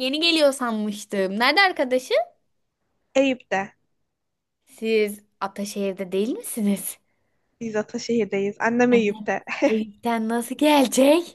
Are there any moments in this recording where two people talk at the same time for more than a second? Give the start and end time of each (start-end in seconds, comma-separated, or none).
none